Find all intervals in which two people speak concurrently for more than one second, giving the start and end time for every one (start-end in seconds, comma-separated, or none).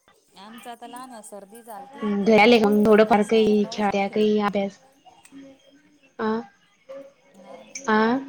2.4-4.3